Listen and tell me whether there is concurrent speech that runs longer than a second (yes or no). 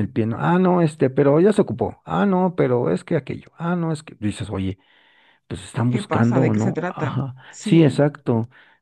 yes